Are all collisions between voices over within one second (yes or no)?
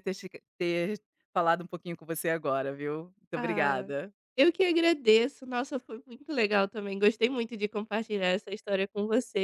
yes